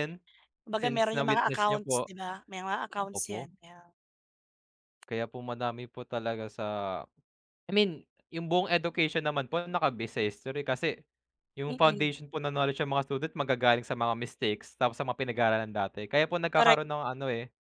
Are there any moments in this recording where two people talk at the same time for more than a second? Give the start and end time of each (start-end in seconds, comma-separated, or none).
0.7-2.1